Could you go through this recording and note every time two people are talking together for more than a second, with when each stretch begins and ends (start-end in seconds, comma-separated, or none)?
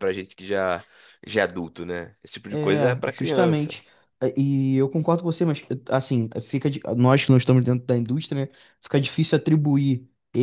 2.5-3.8